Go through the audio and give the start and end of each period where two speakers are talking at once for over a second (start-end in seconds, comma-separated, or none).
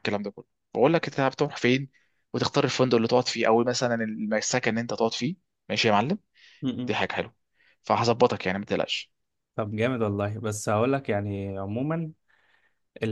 none